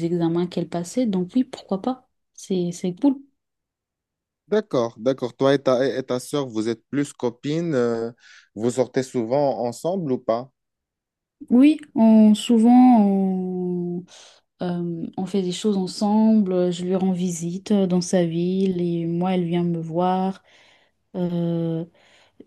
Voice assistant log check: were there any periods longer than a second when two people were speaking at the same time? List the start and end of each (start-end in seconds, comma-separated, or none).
none